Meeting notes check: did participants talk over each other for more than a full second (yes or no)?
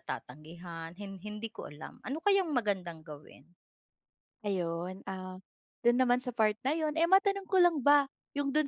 no